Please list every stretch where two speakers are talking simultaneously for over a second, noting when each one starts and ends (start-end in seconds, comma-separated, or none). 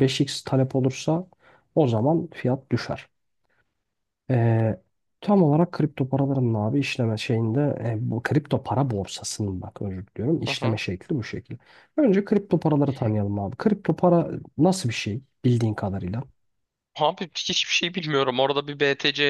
none